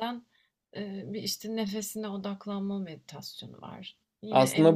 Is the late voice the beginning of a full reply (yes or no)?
yes